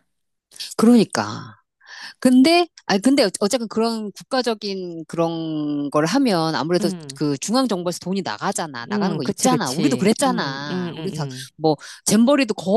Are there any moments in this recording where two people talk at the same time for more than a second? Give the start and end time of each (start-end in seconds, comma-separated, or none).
8.9-11.5